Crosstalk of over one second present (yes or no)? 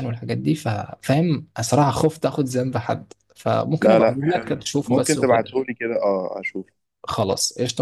yes